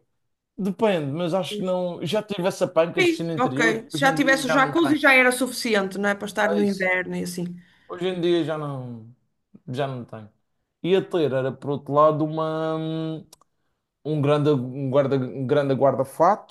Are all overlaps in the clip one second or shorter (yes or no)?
no